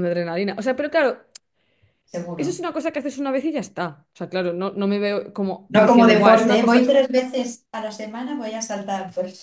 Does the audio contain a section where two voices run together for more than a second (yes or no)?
yes